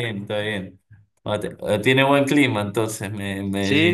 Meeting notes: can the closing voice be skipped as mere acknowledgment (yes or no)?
no